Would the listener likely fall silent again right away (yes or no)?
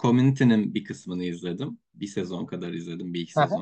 yes